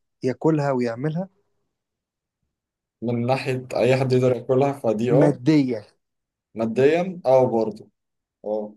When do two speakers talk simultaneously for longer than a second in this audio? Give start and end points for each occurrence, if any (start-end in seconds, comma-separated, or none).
none